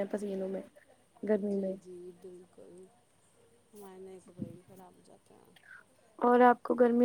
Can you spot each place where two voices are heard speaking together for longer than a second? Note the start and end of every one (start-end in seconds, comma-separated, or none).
none